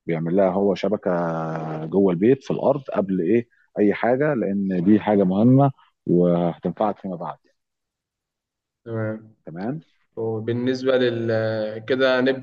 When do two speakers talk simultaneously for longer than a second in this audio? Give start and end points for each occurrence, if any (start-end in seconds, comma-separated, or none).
none